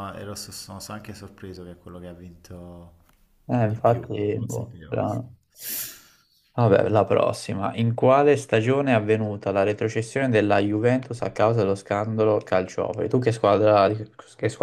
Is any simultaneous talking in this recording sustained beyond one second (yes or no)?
yes